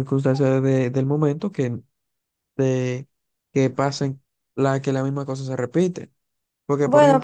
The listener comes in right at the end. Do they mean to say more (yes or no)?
no